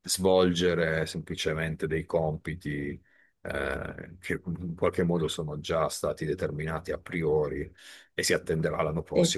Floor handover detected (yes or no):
no